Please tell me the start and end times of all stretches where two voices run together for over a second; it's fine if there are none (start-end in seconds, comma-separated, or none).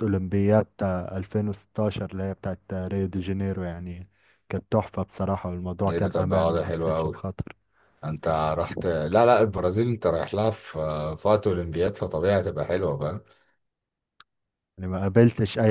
5.9-7.2